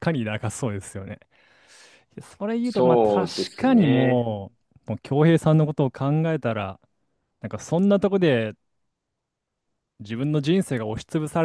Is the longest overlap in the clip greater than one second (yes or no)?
yes